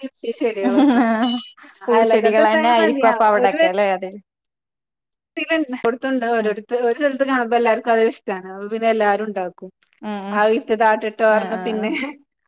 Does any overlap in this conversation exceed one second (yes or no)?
yes